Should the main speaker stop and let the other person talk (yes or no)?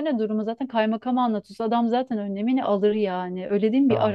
yes